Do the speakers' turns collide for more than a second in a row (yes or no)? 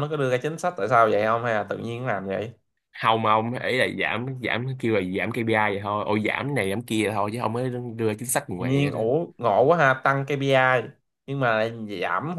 no